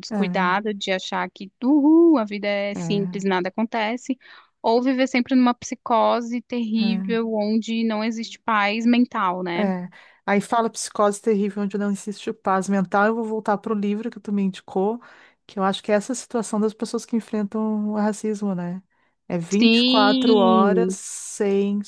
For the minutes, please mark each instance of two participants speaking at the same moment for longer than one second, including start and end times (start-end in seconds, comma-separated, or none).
19.6-21.0